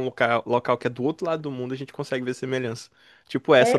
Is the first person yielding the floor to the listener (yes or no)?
yes